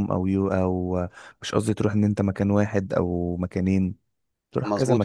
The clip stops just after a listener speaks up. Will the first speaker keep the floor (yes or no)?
no